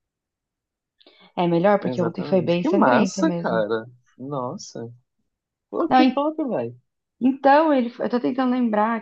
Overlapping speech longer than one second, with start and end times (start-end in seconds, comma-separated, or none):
1.8-3.7